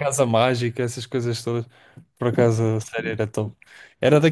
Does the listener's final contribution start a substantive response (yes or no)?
no